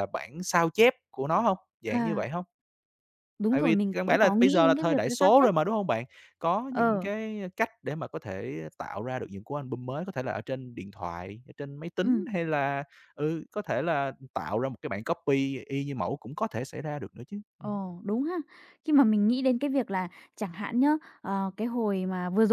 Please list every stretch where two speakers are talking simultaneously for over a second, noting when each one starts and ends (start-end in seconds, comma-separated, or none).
3.5-5.5